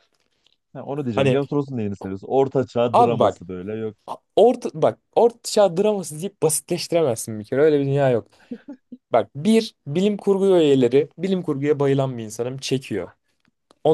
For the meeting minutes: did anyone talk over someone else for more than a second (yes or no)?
no